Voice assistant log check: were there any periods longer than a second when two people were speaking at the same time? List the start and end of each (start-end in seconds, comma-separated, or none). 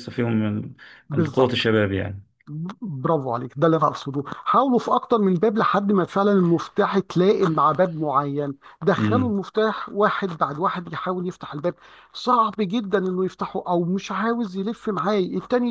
none